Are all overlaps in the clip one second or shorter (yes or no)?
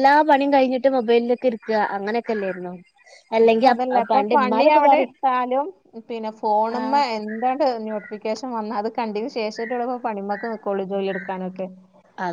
yes